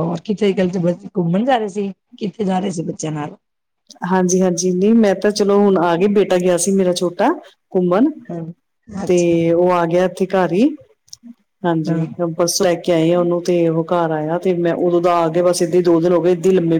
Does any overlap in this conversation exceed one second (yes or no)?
no